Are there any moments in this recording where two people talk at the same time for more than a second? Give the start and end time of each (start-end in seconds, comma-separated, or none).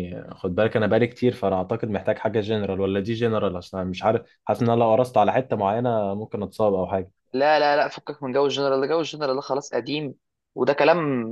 none